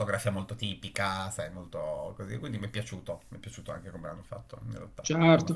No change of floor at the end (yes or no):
no